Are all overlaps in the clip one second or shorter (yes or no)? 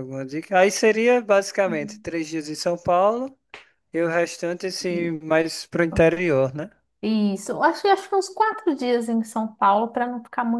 yes